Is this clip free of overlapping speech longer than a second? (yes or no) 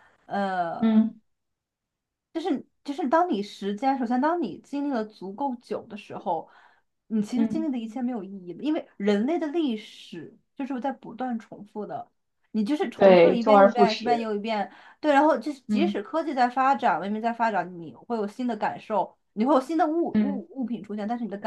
no